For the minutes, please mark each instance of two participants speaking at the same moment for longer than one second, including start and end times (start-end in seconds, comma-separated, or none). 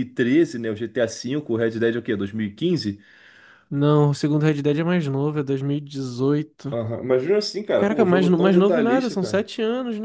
7.8-9.5